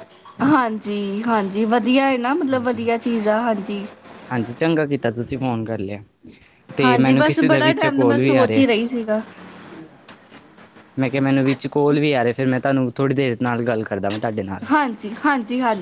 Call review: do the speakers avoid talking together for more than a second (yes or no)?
no